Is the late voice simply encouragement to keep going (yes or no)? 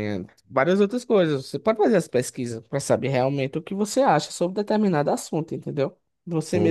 no